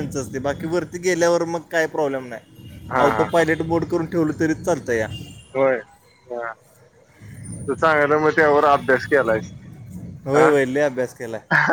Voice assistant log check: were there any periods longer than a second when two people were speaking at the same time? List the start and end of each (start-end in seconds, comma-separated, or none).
none